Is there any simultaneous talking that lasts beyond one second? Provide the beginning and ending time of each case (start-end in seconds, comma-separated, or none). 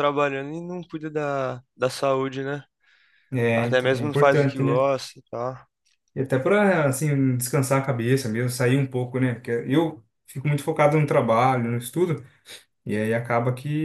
3.5-4.9